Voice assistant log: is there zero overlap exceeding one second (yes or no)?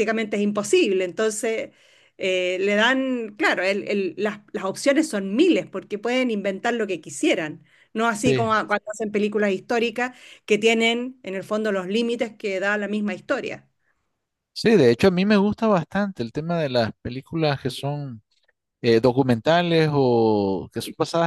yes